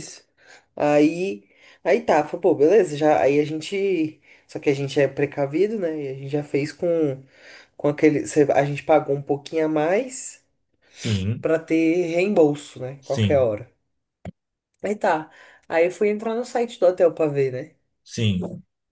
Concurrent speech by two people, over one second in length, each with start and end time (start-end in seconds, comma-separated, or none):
none